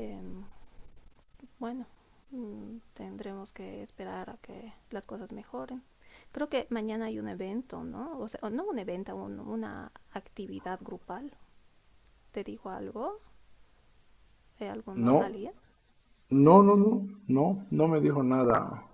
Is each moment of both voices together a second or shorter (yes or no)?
yes